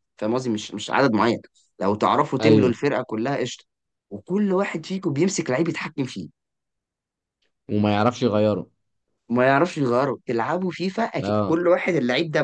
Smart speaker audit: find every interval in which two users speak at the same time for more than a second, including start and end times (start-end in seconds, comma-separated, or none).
none